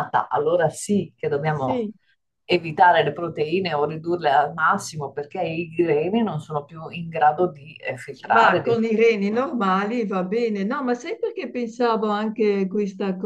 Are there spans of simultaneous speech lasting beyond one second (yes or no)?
no